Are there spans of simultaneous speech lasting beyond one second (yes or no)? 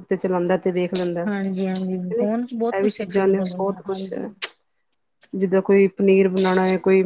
yes